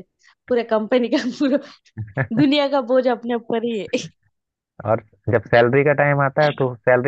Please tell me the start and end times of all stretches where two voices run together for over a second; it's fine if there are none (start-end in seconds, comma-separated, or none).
none